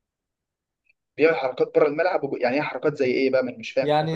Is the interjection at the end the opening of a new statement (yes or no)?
yes